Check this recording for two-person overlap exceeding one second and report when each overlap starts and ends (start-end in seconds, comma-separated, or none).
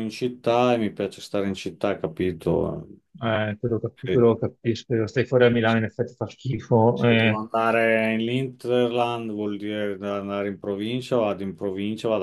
none